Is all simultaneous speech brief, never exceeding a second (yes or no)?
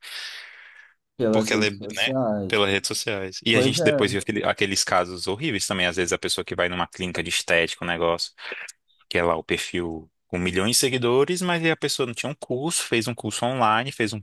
no